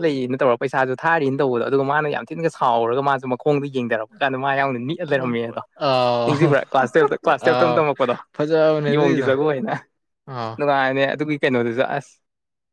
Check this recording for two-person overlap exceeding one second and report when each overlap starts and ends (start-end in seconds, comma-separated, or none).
none